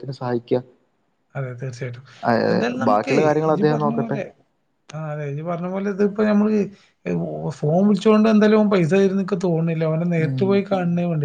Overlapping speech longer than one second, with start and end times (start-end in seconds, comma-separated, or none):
2.5-4.2